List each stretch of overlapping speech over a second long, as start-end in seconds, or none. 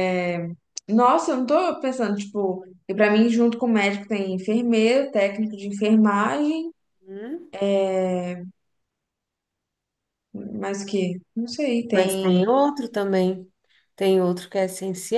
none